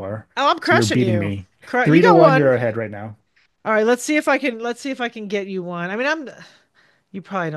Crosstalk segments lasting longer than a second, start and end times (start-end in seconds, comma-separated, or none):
0.6-2.5